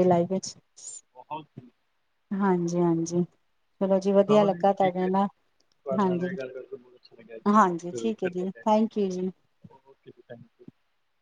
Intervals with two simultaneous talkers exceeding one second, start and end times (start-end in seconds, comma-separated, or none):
7.9-9.2